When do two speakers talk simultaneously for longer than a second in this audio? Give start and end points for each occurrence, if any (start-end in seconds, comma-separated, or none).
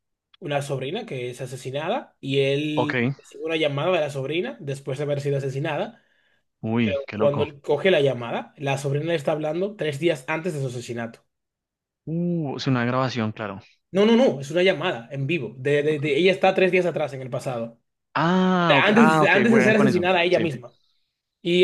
18.8-20.4